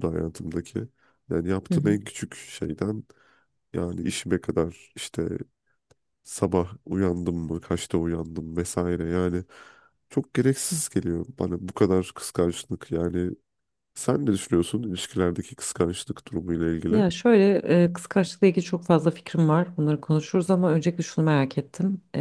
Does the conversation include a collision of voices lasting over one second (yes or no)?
no